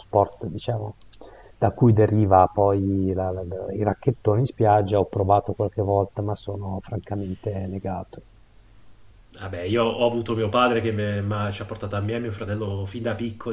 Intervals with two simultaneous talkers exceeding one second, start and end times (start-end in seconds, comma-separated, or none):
none